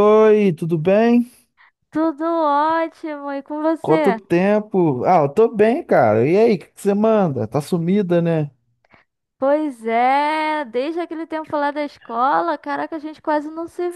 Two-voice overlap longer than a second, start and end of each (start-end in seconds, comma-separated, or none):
none